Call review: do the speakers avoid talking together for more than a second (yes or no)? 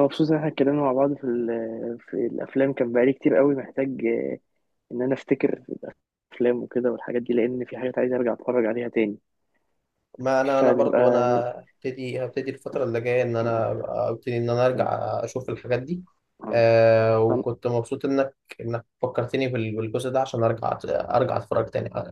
yes